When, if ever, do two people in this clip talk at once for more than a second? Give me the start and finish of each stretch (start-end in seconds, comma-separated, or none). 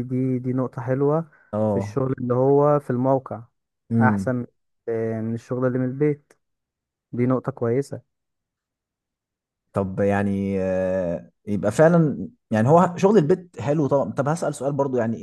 none